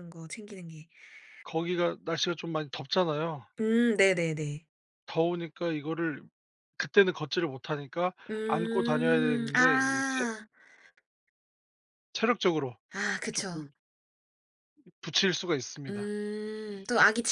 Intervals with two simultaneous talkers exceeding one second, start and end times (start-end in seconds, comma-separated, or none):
8.5-10.3